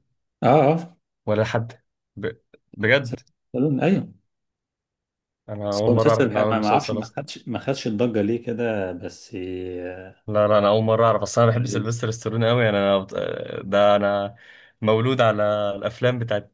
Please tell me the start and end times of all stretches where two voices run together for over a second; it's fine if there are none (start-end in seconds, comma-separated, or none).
5.7-7.2